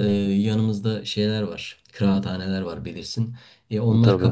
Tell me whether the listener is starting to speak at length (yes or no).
no